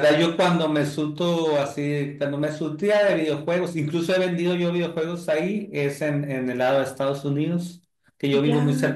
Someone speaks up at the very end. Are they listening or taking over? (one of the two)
listening